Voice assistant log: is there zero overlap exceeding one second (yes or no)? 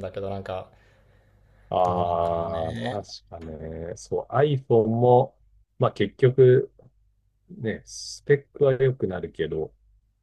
no